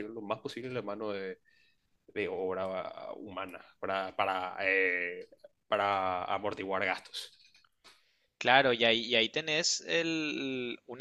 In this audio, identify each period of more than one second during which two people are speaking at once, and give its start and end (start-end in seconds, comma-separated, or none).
none